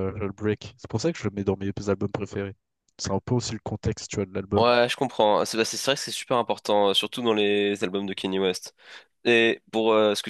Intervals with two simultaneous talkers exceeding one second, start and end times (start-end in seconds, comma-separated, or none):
none